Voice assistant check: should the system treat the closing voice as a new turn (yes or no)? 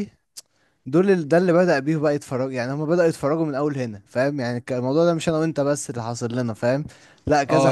yes